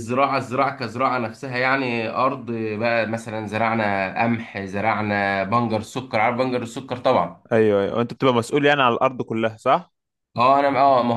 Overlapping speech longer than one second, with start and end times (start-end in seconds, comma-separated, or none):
none